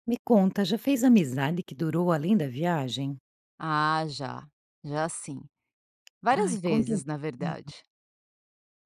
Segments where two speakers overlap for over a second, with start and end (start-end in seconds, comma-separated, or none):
6.3-7.7